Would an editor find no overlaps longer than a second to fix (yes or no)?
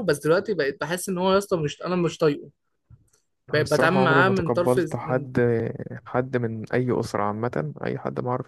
no